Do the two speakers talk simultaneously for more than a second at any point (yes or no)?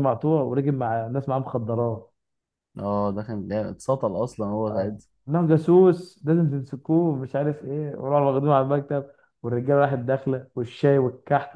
no